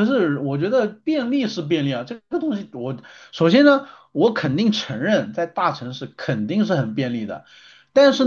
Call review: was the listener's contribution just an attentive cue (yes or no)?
yes